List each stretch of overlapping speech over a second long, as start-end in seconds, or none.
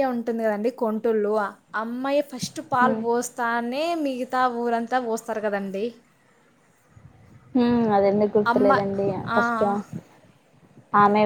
none